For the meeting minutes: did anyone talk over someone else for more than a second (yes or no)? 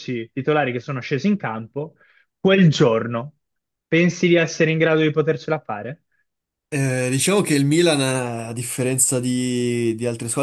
no